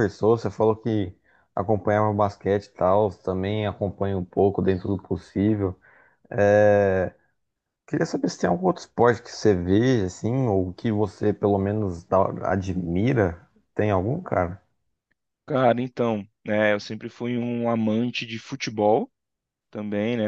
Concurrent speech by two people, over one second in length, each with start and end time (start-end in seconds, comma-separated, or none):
none